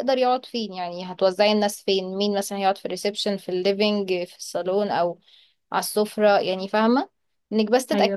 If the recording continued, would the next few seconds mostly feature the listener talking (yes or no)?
no